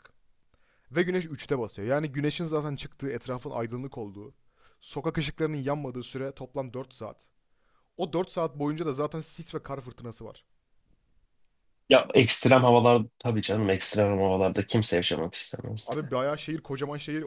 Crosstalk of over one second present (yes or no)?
no